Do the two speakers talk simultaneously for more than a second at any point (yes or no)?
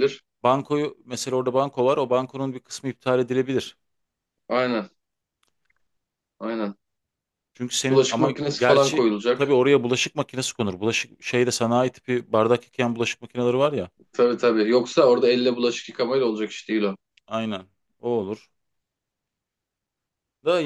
yes